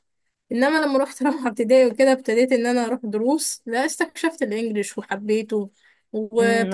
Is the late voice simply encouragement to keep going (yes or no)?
no